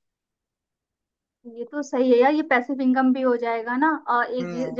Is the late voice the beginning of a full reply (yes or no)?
no